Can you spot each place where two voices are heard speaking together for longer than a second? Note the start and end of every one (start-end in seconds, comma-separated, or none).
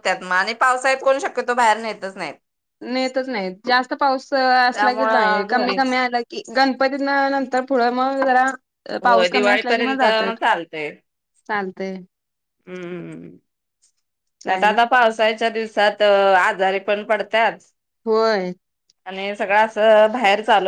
4.7-6.0